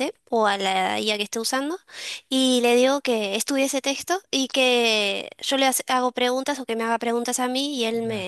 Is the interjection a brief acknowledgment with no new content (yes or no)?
yes